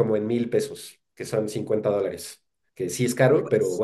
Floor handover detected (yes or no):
no